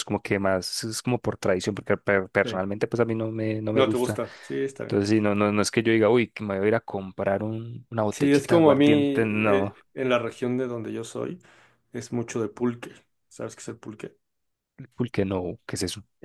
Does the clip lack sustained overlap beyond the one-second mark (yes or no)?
no